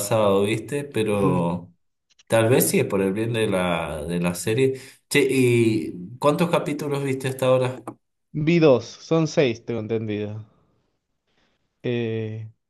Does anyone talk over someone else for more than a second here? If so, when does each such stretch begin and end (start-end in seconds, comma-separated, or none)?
none